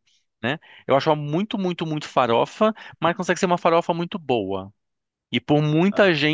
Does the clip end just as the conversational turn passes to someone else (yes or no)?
no